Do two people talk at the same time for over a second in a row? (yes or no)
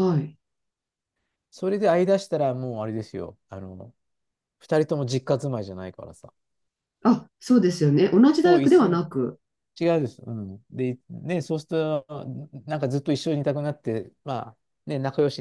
no